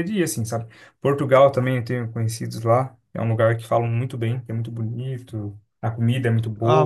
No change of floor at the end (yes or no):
no